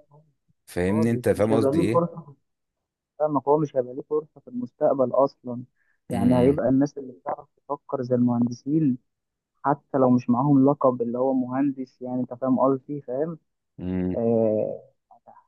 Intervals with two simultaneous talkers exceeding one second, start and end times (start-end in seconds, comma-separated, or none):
0.9-2.1